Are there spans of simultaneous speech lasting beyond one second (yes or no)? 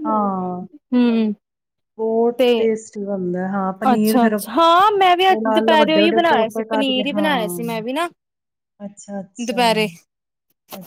yes